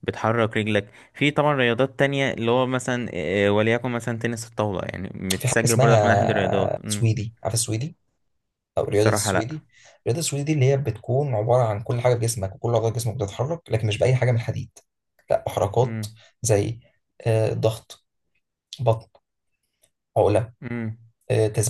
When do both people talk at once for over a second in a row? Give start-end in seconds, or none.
5.3-7.1